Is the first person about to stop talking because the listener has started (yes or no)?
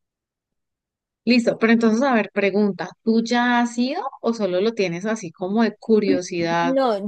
yes